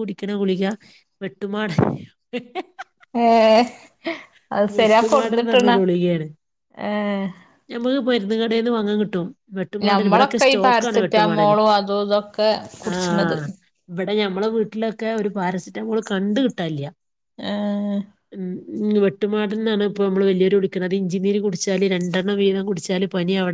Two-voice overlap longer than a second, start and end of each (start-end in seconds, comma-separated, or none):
9.9-11.6